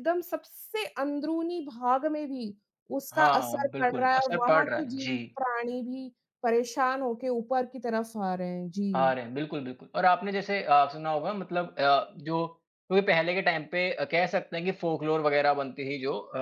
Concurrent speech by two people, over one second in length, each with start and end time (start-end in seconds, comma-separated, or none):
3.1-5.4